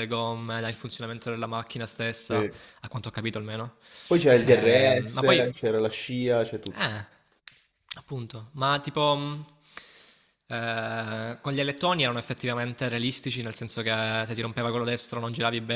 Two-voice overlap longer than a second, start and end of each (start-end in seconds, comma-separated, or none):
4.3-5.5